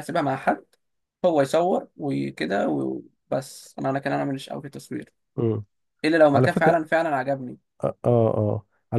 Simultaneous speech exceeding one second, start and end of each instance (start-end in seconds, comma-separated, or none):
none